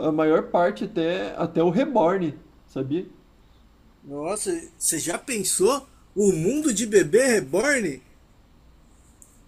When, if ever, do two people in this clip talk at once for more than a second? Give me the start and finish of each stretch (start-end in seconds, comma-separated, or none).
none